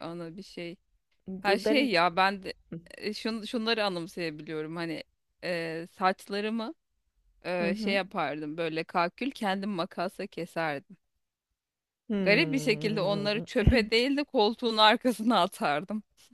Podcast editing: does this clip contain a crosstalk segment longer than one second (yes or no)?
yes